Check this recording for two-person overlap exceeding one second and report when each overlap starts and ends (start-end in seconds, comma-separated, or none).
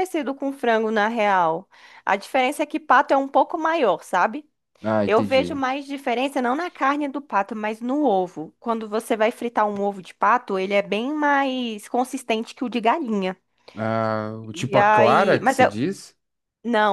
14.5-15.8